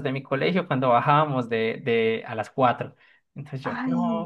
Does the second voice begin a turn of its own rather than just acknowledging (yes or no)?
no